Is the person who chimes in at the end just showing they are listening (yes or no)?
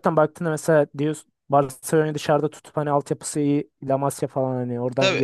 no